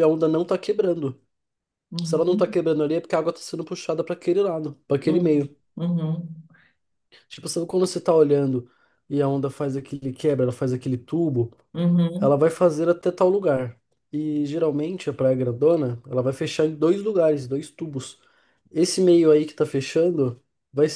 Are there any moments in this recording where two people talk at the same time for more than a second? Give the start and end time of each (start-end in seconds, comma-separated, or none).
none